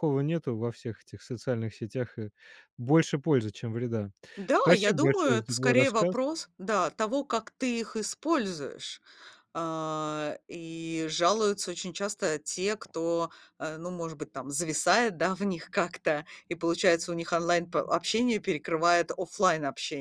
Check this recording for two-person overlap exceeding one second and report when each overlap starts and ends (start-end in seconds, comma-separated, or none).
4.5-6.2